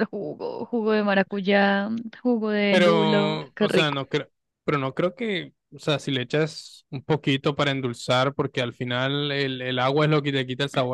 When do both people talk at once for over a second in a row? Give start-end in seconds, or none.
2.7-4.0